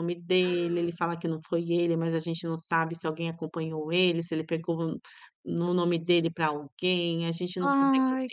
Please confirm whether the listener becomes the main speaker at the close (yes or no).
no